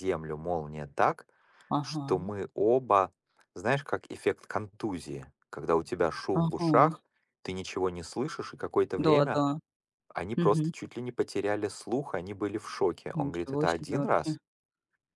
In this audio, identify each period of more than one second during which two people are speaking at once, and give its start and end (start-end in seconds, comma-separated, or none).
13.1-14.4